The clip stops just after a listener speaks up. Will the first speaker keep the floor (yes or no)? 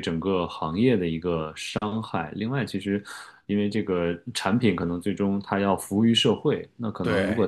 yes